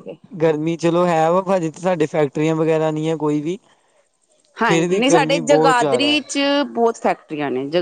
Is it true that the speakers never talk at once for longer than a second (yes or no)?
no